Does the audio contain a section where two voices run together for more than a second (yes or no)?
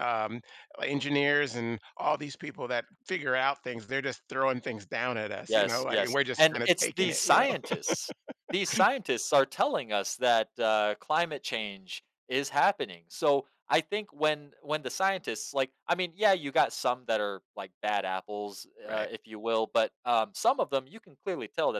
yes